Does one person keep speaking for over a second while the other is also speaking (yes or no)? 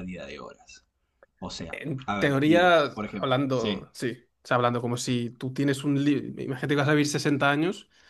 yes